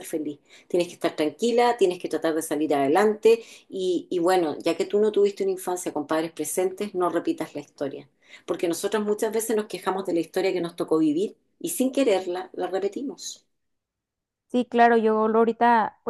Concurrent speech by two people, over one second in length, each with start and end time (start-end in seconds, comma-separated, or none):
none